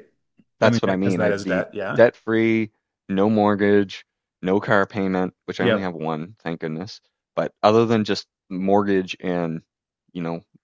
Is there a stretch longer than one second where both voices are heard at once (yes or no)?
yes